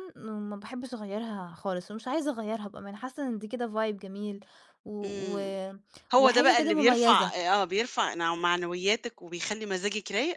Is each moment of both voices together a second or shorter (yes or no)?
no